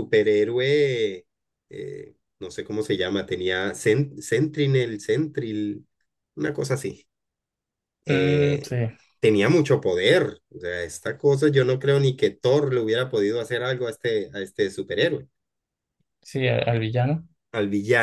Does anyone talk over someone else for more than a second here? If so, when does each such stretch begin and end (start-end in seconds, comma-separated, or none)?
none